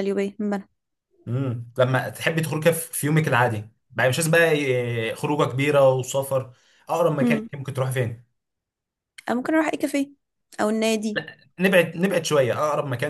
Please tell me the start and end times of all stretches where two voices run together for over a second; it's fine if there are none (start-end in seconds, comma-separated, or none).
none